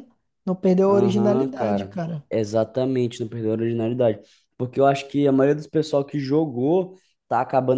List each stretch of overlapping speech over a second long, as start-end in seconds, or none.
0.9-2.2